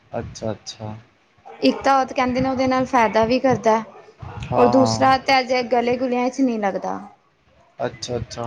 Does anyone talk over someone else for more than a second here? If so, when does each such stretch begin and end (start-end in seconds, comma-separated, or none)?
none